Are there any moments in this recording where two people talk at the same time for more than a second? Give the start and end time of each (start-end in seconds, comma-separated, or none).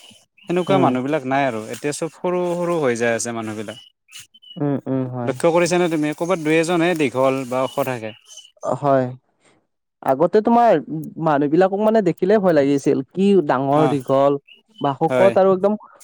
none